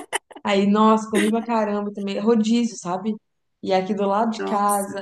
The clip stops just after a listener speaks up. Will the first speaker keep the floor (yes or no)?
yes